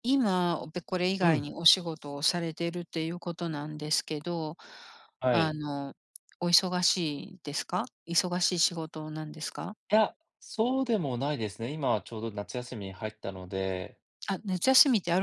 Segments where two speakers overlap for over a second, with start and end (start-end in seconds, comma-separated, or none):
none